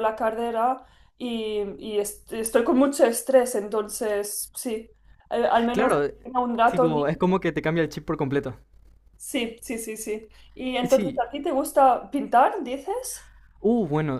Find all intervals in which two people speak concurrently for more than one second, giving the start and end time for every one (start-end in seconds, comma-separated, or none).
none